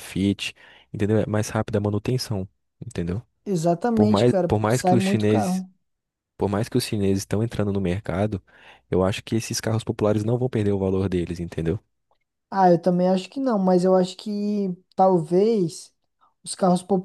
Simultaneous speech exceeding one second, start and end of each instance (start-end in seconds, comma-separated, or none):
3.9-5.6